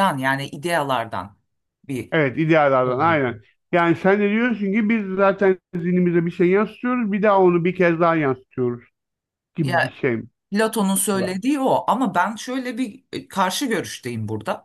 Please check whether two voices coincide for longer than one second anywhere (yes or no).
no